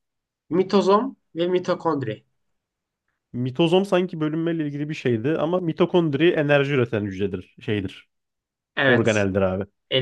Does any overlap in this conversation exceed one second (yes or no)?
no